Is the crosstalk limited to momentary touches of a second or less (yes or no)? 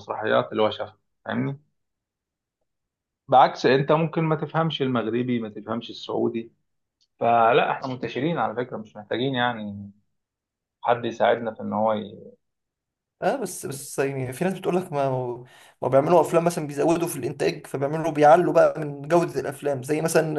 yes